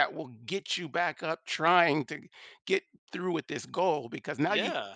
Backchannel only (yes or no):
yes